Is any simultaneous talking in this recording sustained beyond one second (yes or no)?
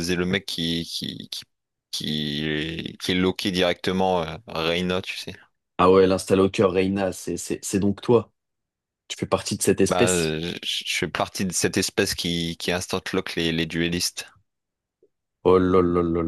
no